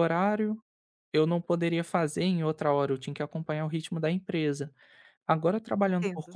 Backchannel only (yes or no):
yes